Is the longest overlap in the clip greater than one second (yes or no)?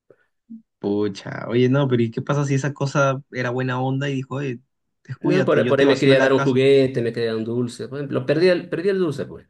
yes